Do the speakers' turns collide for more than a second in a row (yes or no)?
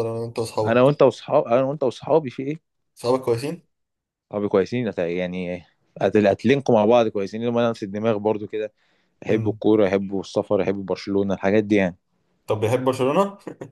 no